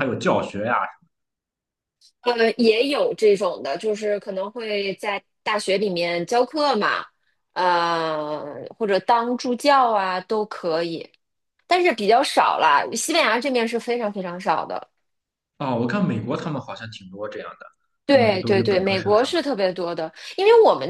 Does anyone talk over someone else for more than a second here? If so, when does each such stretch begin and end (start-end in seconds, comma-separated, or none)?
18.1-19.5